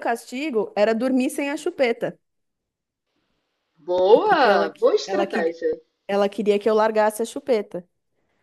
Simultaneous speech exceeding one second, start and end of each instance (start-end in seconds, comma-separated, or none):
4.2-5.6